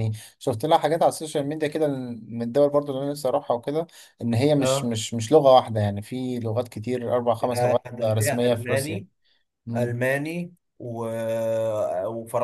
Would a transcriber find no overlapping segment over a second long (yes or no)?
no